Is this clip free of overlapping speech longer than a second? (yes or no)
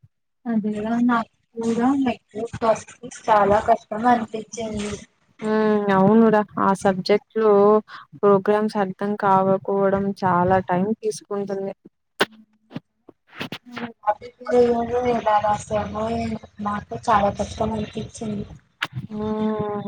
no